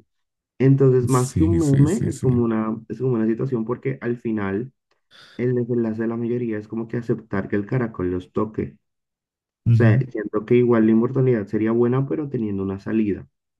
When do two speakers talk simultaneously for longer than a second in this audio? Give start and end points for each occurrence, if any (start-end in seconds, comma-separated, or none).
1.1-2.3